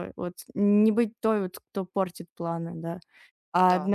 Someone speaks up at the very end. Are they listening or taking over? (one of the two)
listening